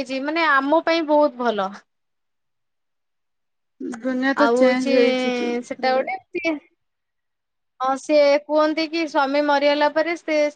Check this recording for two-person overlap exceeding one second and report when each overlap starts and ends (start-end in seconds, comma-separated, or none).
none